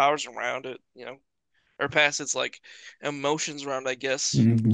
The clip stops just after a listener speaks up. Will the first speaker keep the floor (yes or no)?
no